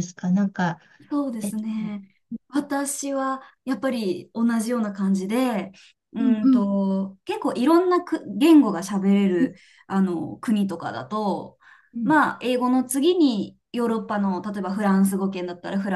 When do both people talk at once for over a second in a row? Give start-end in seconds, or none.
none